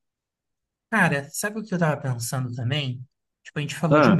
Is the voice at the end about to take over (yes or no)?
no